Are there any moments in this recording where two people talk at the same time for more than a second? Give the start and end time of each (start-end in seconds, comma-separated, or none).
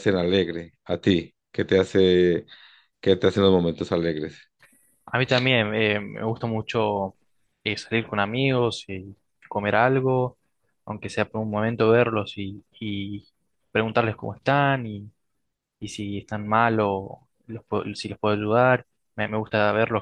none